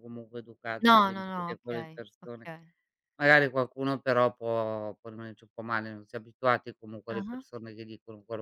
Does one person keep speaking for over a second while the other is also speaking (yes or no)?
yes